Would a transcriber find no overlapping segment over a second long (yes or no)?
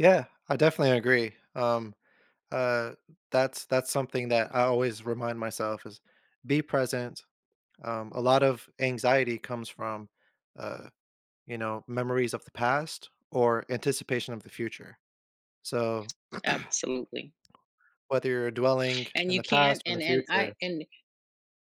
no